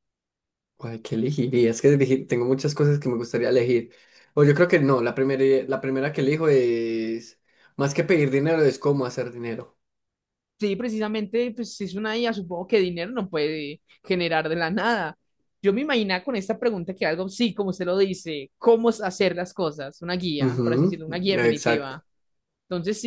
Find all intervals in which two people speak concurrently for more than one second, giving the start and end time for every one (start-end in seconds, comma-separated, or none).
20.4-22.0